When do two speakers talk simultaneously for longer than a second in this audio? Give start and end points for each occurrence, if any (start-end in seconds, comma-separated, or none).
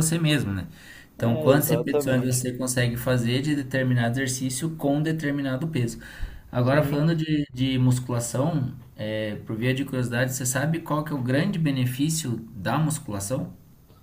1.2-2.4